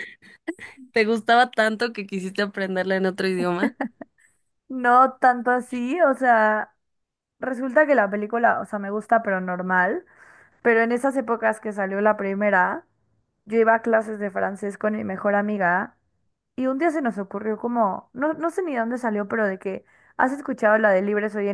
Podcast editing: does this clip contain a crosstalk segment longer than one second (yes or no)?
no